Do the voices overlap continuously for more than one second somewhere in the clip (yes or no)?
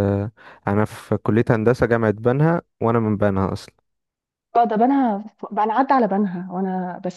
no